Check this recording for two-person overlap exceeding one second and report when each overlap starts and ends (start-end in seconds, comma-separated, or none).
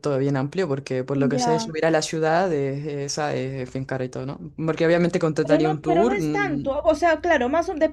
5.4-6.7